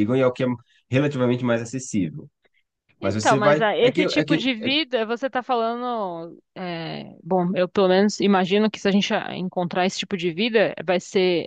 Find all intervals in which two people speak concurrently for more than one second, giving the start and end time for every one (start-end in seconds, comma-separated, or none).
3.0-4.7